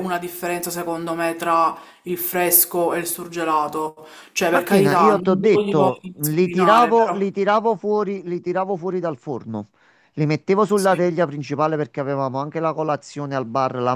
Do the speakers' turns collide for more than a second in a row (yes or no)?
yes